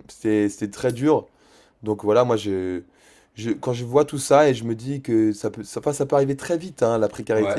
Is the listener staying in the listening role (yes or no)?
no